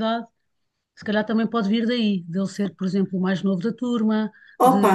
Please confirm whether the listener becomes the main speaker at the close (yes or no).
yes